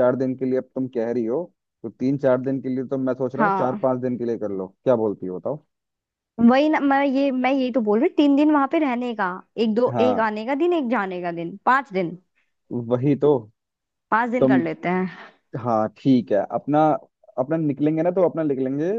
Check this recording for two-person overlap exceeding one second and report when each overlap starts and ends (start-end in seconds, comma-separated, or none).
none